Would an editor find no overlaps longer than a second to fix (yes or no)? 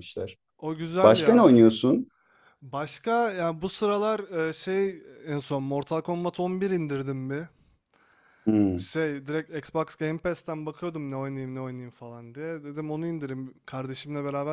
yes